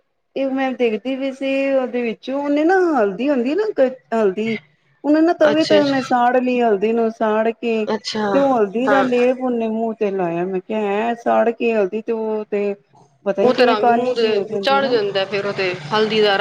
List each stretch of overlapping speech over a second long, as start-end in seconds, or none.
13.5-15.0